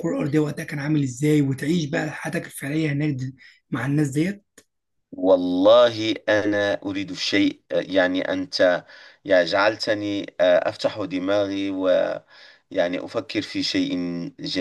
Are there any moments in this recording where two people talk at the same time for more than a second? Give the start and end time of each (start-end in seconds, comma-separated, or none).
none